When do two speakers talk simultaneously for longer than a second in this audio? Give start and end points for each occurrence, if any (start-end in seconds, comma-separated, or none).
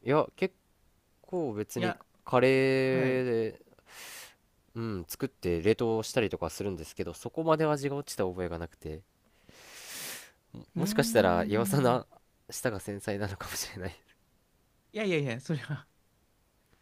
10.8-12.0